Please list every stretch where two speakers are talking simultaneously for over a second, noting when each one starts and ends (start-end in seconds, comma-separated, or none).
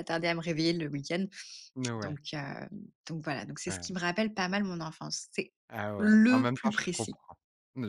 6.0-7.2